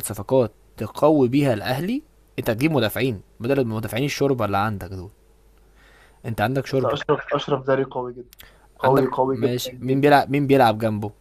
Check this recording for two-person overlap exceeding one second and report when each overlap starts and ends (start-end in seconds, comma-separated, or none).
8.8-10.2